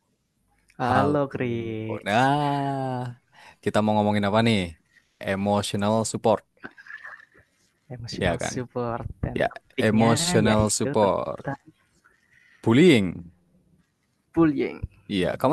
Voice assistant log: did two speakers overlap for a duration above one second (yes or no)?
yes